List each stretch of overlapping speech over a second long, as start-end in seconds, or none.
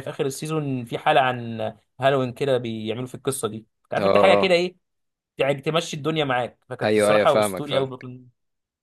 6.8-8.1